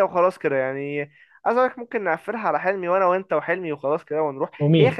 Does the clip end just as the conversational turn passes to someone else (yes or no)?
no